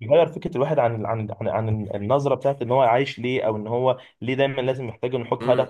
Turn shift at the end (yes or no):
yes